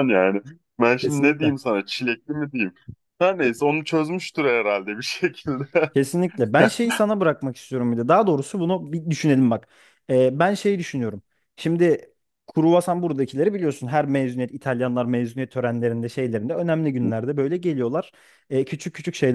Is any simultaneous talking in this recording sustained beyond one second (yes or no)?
no